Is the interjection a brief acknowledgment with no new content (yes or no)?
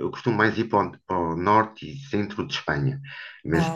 yes